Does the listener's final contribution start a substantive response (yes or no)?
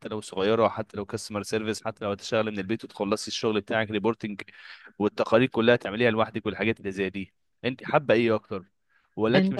no